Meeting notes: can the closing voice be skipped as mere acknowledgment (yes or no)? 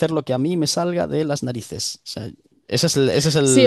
no